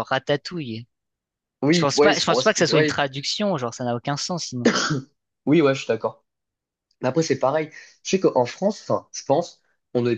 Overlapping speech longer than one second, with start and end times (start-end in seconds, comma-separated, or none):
1.7-3.0